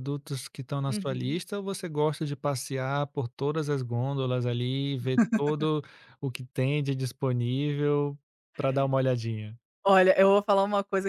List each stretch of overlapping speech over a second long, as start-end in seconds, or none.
none